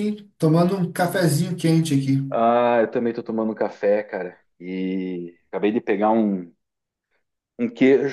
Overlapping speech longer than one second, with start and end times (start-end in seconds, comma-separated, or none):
none